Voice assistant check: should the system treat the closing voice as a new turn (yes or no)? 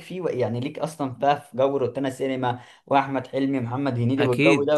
yes